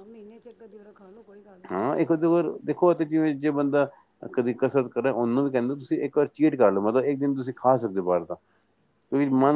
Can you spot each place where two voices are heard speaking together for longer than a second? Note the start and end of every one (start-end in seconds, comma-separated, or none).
none